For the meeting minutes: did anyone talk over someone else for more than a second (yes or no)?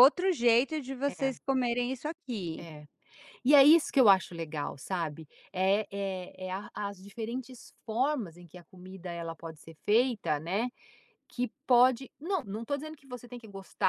no